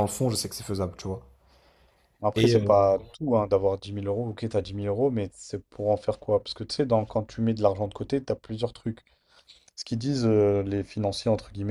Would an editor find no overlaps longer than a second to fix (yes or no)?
yes